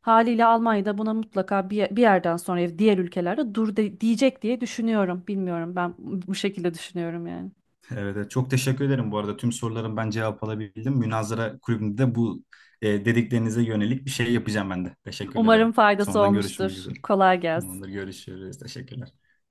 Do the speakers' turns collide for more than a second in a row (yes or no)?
yes